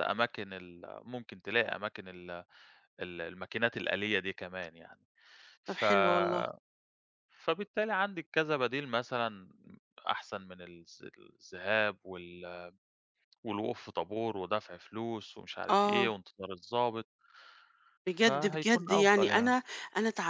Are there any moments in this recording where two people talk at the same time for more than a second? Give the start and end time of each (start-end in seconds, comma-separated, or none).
18.2-19.6